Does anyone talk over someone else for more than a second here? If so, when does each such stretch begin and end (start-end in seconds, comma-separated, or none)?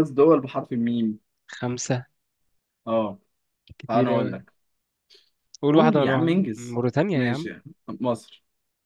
5.7-7.5